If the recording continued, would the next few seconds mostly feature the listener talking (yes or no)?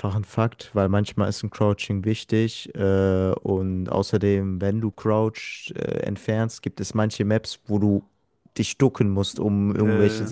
no